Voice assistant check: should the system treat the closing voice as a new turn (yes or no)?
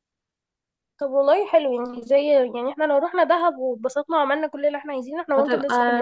yes